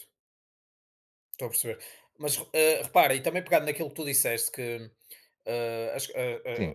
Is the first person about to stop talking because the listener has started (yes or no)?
no